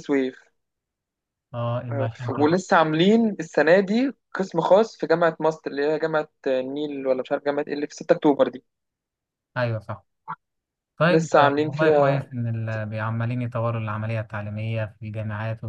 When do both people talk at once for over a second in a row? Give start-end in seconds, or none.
11.1-12.3